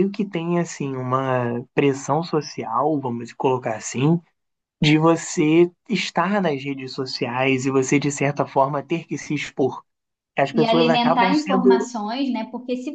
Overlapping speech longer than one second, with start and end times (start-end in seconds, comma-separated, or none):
10.5-11.9